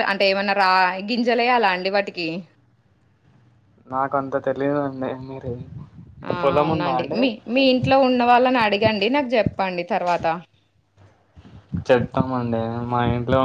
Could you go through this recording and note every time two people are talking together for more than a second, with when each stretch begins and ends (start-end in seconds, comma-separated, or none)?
none